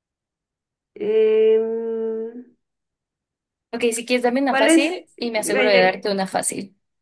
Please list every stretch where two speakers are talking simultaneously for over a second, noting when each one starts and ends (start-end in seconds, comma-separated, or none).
4.5-6.1